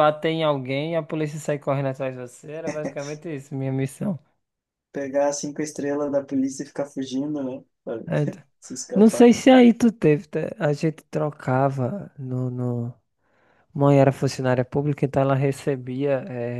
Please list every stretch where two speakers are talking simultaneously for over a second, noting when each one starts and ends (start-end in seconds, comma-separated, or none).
none